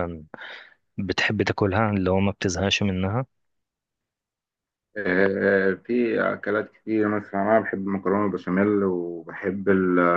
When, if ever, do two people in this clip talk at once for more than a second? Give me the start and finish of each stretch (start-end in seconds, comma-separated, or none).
none